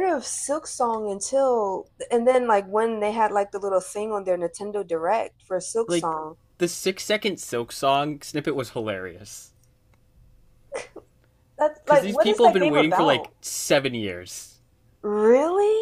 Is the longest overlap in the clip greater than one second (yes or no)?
yes